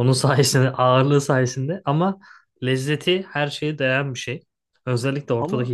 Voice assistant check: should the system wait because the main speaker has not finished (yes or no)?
yes